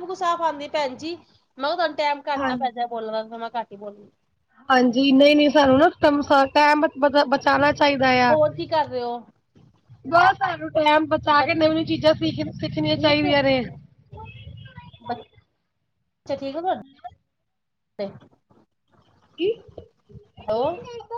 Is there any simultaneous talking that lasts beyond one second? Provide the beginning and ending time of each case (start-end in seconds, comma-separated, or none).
none